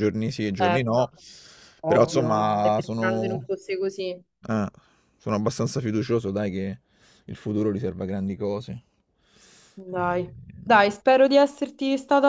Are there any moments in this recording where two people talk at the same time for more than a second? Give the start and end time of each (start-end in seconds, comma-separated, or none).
1.9-3.5